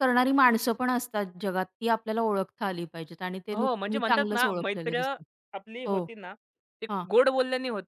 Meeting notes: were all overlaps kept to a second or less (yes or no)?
no